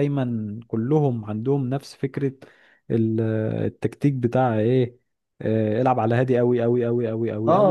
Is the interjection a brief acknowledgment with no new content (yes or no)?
no